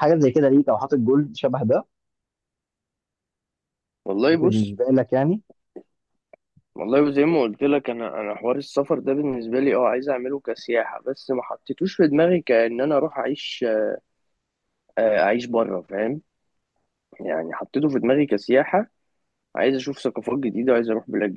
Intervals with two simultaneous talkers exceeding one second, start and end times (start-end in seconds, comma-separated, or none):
none